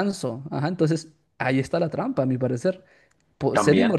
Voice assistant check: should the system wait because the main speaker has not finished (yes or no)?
yes